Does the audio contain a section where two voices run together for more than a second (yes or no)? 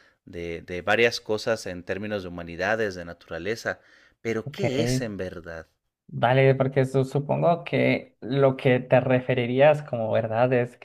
no